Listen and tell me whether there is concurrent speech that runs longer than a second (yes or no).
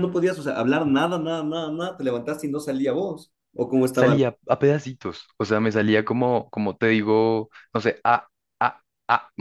no